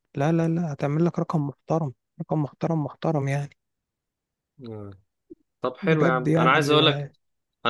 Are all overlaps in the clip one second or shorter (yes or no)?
no